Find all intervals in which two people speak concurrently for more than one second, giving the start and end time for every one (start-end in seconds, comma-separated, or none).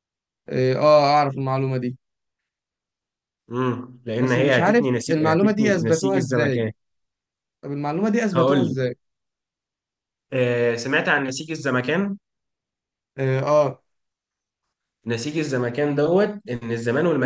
4.2-6.7